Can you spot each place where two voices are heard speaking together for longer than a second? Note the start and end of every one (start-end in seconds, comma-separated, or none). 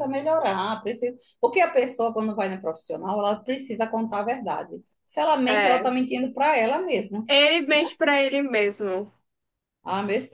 none